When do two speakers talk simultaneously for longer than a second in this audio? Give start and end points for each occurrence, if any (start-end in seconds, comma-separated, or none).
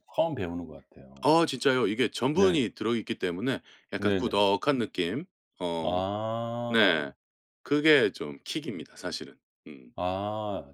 none